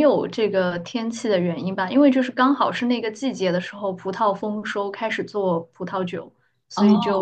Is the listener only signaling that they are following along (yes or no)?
yes